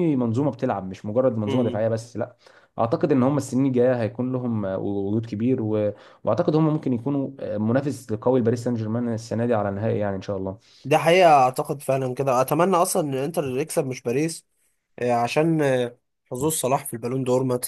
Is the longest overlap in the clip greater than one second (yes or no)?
no